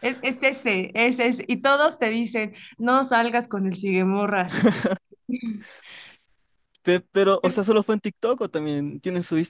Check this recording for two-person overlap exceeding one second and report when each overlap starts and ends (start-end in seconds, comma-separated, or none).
none